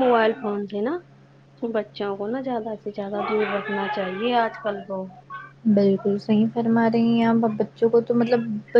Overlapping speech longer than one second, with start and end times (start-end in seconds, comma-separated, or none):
none